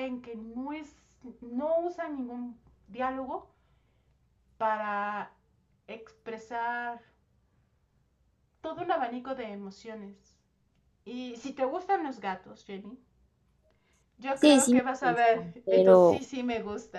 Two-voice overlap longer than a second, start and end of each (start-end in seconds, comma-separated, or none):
14.3-16.3